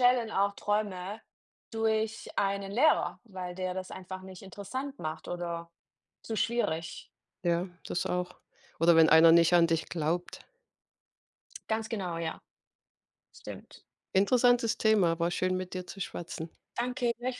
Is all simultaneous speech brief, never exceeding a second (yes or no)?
yes